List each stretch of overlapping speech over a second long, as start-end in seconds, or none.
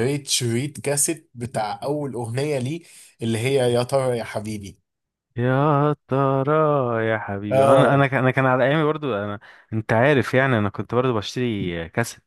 none